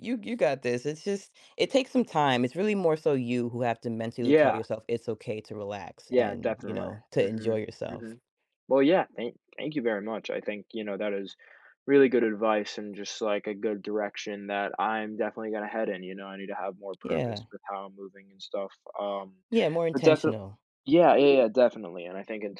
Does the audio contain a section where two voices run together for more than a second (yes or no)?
yes